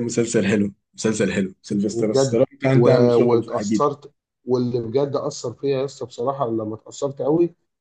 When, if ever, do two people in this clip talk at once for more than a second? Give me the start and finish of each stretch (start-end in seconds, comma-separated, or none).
1.9-3.9